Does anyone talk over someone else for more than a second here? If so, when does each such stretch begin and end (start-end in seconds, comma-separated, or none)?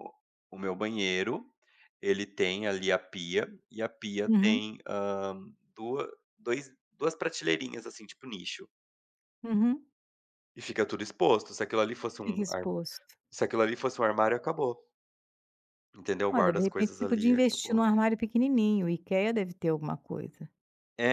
16.3-17.9